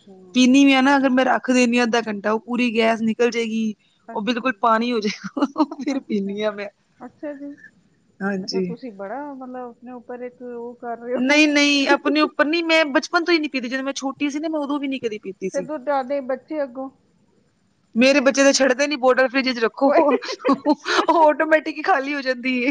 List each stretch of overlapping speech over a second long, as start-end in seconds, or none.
none